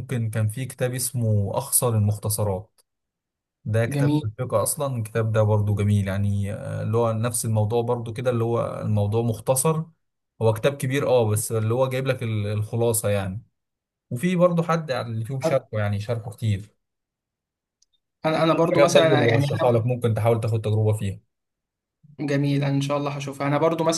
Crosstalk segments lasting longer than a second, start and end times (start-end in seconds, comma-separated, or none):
18.5-19.9